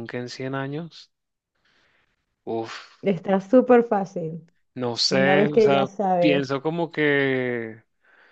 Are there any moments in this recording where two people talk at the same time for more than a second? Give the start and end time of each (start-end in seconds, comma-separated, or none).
5.1-6.5